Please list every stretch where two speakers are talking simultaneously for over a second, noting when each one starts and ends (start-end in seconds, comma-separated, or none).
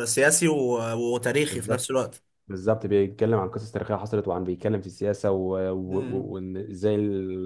none